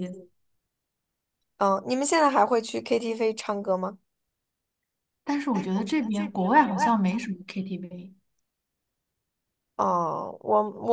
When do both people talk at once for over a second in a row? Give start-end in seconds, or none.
5.5-7.2